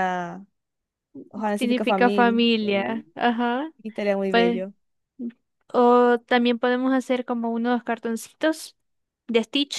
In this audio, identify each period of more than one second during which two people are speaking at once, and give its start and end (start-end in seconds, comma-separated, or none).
1.5-3.0